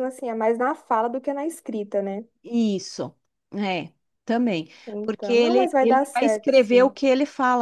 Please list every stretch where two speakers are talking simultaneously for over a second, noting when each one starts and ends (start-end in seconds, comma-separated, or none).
4.9-7.0